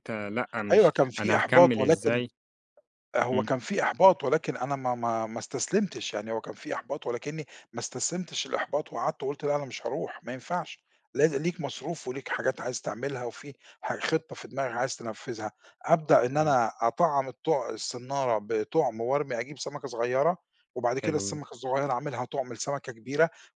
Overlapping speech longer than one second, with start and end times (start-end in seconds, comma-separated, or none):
0.7-2.2